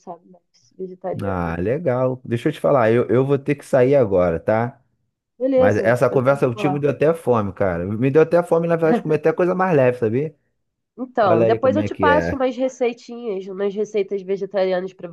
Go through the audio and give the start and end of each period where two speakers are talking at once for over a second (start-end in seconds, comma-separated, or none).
5.5-6.8, 11.2-12.4